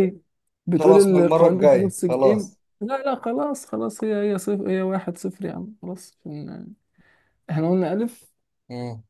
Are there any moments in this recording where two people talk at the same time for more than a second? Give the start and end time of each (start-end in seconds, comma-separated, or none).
0.8-2.6